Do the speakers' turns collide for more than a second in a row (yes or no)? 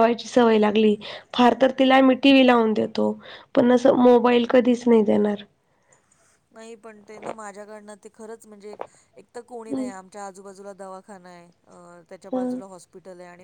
no